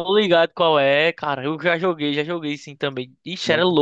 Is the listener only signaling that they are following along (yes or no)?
yes